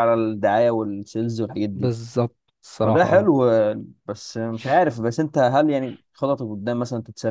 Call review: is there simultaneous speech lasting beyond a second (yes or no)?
no